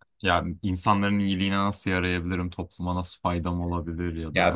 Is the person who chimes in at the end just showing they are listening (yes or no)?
no